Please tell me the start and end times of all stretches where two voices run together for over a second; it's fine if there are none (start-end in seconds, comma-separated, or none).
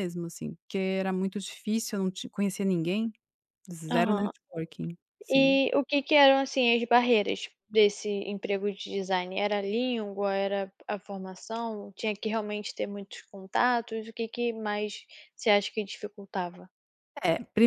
none